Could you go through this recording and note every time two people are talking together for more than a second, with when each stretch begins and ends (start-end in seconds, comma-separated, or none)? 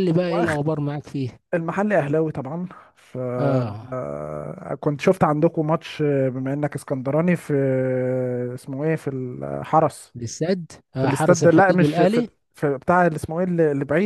11.0-12.3